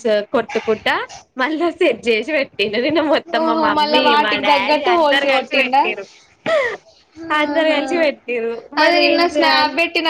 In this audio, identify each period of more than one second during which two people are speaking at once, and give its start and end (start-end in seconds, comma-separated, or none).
3.4-5.8